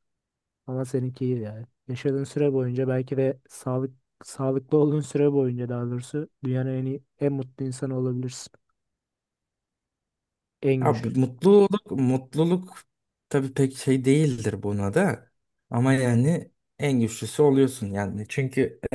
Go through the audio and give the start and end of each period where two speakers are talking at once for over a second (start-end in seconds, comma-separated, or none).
none